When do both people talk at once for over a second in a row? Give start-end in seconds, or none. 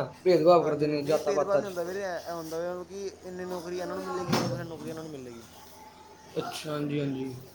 0.6-2.0